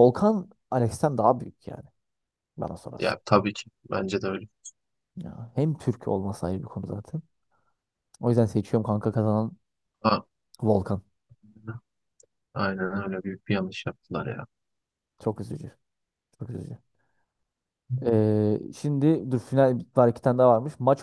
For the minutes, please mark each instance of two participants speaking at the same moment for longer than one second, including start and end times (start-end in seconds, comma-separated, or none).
none